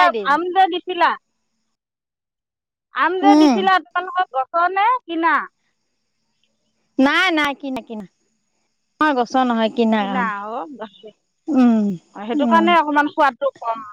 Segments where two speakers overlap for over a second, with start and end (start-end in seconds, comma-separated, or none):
none